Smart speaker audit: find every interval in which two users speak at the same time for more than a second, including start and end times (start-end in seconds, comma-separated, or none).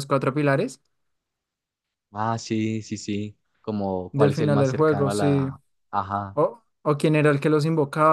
4.1-5.5